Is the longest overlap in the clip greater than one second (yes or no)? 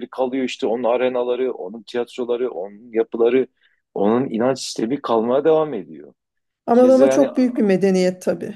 no